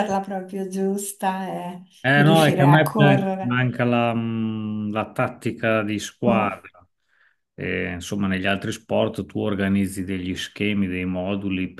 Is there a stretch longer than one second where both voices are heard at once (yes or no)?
yes